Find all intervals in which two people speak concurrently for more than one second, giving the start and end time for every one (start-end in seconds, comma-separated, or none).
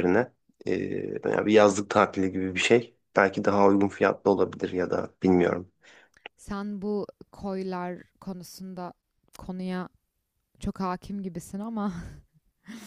none